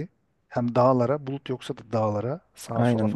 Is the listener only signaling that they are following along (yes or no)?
no